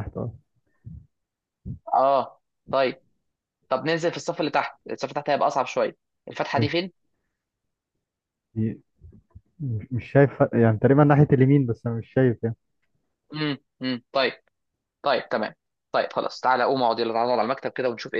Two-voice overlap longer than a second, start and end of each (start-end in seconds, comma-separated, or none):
none